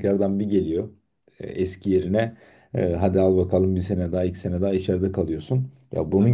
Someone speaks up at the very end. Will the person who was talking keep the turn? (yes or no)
yes